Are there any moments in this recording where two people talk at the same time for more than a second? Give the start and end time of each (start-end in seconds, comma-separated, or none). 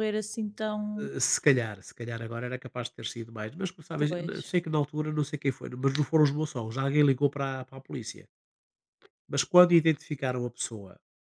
none